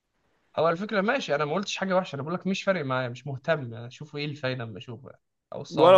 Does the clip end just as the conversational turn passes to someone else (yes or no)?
yes